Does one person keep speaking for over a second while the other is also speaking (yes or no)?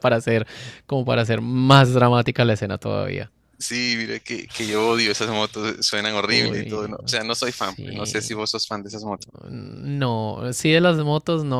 yes